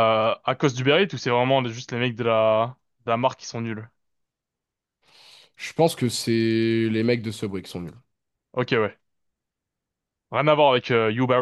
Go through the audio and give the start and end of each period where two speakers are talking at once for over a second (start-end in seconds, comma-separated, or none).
none